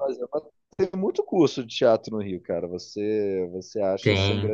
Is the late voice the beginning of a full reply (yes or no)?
no